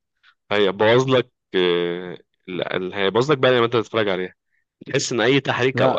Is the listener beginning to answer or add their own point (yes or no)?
no